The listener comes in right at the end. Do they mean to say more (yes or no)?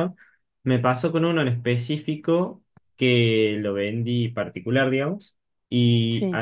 no